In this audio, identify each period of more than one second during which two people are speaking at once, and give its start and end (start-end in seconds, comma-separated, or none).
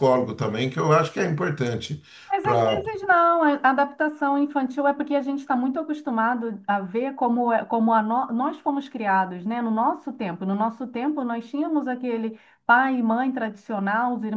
none